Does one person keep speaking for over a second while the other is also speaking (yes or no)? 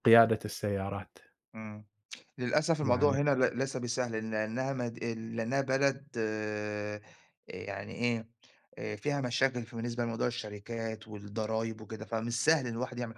no